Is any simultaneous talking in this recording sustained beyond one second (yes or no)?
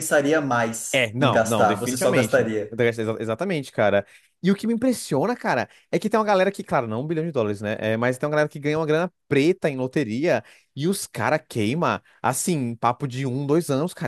yes